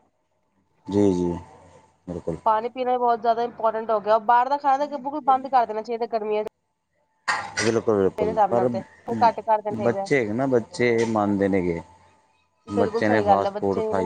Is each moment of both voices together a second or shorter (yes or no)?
yes